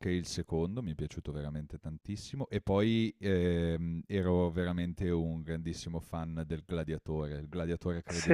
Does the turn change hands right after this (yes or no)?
no